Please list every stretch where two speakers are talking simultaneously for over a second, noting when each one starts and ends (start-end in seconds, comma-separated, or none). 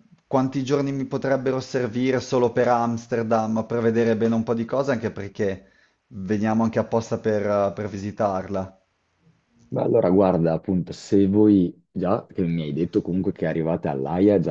none